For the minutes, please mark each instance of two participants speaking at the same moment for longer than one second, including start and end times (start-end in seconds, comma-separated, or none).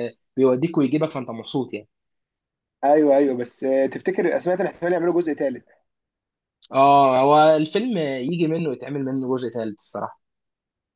none